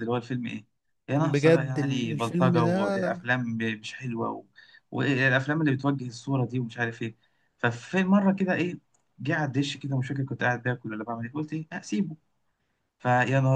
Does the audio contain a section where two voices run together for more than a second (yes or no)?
yes